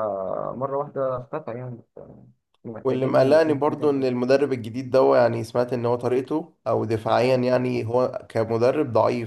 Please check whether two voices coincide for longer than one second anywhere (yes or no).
yes